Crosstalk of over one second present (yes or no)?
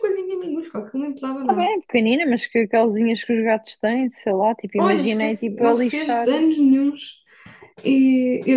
yes